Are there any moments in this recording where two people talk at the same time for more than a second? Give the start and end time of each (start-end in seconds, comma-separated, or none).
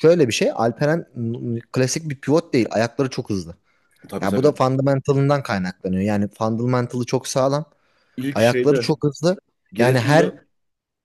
none